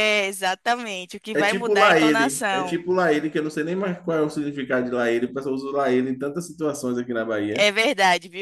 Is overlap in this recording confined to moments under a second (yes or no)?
no